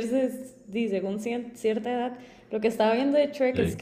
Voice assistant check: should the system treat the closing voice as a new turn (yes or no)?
no